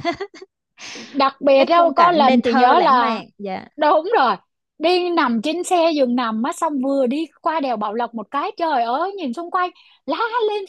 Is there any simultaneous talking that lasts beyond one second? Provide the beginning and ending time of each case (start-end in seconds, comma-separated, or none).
1.6-3.2